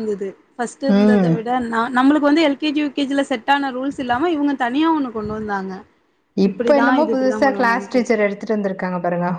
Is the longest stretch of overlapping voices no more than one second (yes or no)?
no